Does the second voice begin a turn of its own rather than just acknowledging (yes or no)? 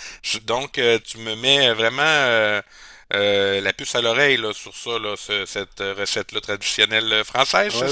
yes